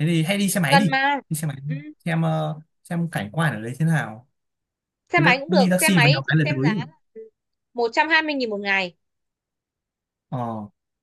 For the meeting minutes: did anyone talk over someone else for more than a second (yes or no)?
yes